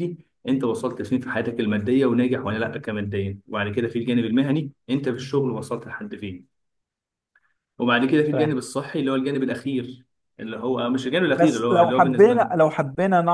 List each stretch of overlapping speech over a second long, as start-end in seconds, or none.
11.3-12.5